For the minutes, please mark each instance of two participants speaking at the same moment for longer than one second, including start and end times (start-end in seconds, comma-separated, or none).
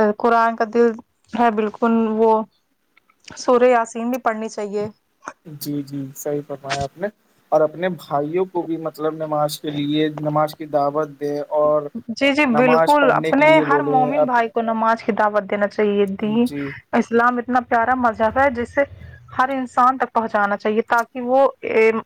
12.6-14.3